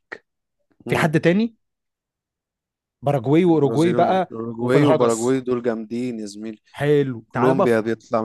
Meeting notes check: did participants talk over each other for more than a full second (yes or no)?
yes